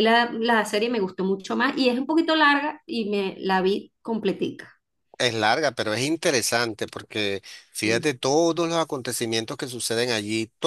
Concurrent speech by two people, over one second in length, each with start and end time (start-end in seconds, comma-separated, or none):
none